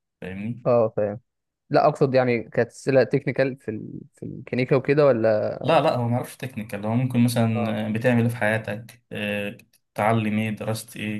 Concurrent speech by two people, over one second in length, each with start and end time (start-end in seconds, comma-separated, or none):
none